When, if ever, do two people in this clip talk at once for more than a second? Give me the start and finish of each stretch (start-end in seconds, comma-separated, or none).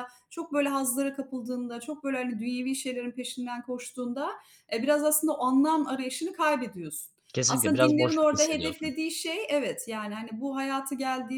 7.5-8.9